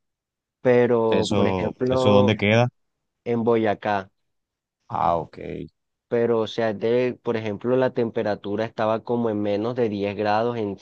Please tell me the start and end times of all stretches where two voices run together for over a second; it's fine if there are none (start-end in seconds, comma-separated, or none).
1.1-2.4